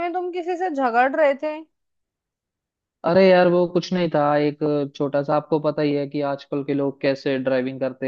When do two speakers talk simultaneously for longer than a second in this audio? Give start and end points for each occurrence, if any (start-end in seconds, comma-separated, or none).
none